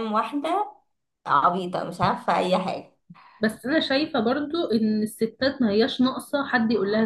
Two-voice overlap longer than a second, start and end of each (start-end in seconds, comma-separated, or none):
none